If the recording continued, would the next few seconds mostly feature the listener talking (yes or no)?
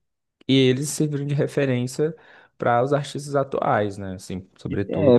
yes